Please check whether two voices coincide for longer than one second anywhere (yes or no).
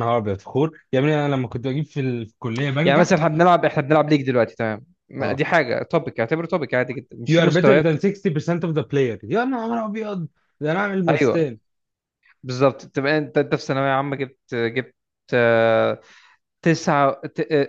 no